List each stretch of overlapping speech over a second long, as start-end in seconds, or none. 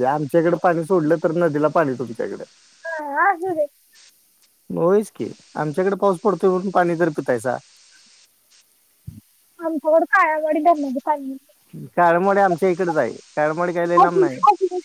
none